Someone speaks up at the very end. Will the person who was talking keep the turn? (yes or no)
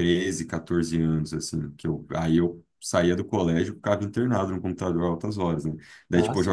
yes